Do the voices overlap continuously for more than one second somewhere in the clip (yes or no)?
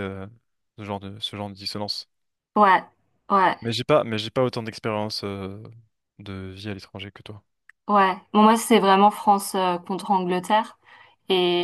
no